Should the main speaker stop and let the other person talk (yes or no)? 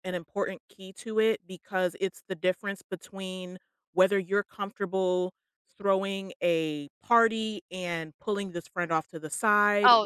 yes